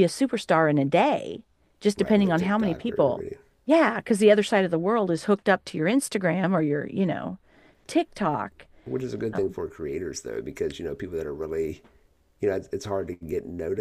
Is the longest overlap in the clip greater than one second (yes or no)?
yes